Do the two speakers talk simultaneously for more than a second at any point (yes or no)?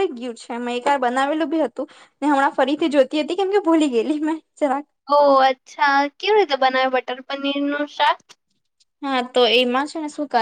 no